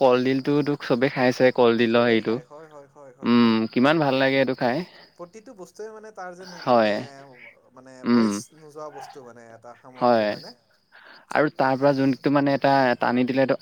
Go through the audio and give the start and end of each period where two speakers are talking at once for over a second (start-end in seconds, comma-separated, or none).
1.9-3.6